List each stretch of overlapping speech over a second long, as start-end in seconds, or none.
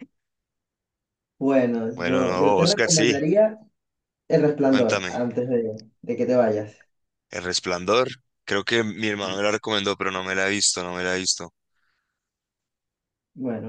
1.9-3.1